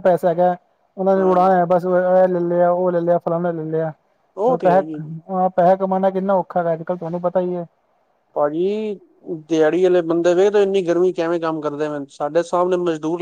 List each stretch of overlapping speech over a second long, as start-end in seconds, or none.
none